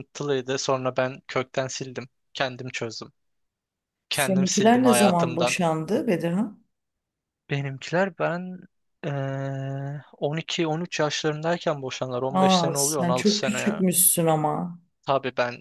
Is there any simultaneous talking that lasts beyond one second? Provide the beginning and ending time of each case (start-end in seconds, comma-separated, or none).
4.1-5.6, 12.3-13.8